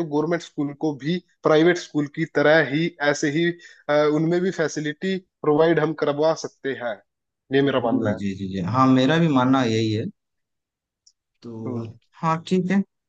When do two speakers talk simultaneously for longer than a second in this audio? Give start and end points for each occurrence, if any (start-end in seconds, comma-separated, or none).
none